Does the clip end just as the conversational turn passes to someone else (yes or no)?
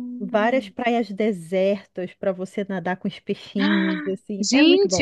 yes